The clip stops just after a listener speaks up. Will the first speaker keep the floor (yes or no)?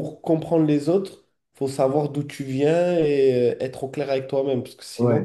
no